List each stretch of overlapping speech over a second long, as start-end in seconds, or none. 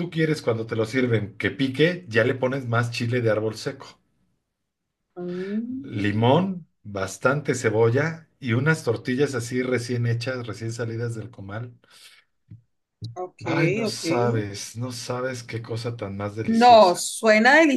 none